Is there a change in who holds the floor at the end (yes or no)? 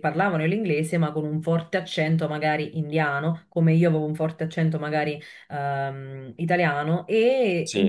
no